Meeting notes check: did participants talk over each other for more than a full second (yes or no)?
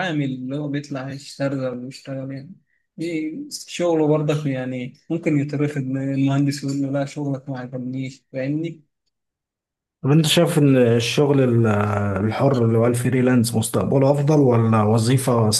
no